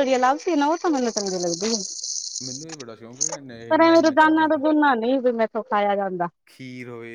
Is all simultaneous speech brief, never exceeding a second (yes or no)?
yes